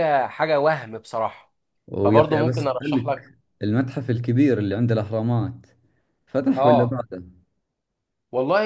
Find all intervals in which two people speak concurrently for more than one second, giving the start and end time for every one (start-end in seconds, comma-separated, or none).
2.0-3.3